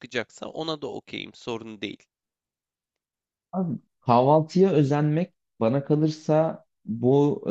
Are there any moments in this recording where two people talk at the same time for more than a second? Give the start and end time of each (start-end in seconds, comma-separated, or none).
none